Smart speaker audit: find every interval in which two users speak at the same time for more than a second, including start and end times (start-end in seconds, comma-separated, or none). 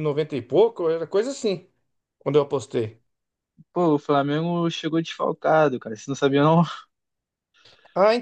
none